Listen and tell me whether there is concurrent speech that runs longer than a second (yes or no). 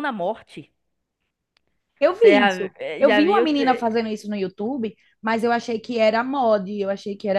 yes